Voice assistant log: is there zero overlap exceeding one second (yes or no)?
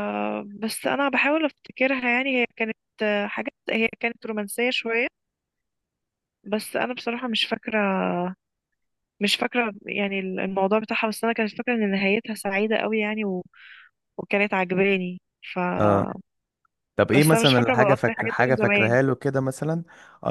no